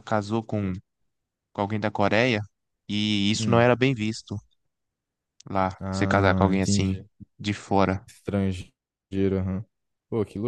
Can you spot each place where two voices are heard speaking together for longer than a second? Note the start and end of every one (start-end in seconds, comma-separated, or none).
5.8-7.0